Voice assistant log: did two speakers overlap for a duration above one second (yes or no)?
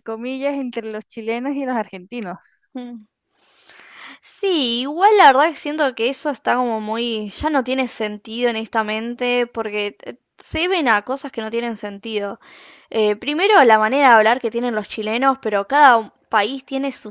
no